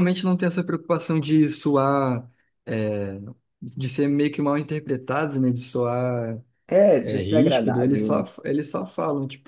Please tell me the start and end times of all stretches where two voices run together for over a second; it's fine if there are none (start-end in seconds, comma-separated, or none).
7.0-8.3